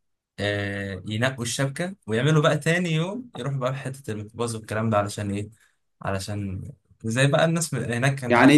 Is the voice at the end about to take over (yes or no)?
yes